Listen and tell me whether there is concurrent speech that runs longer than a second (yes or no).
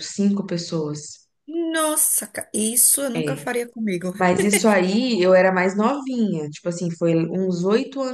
no